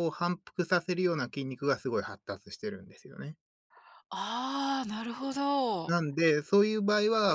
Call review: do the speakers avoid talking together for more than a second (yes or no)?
yes